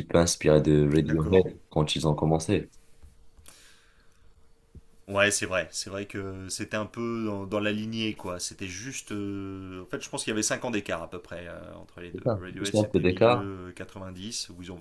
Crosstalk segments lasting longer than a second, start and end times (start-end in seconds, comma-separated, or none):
12.1-13.5